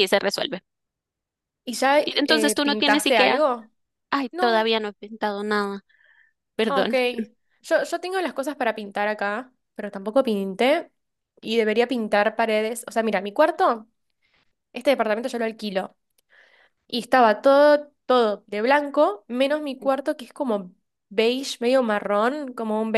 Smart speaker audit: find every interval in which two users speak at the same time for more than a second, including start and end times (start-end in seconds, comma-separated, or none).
2.0-3.4